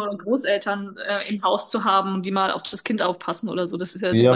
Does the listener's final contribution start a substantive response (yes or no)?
yes